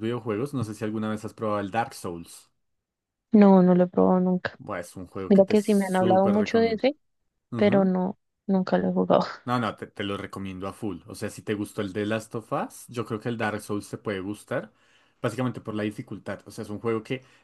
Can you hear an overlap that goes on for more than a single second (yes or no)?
yes